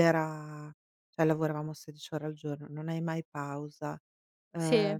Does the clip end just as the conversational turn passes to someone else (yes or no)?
no